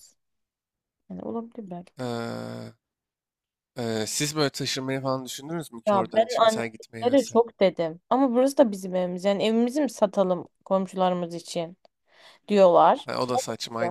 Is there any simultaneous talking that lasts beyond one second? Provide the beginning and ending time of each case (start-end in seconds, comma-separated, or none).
5.9-7.4